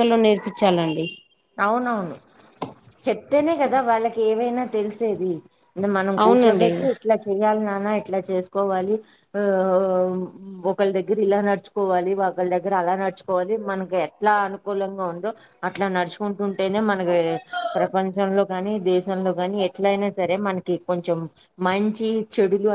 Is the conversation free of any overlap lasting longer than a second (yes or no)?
yes